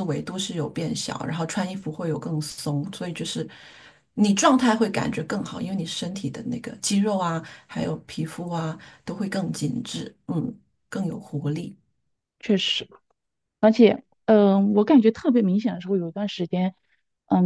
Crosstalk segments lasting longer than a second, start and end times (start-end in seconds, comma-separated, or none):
none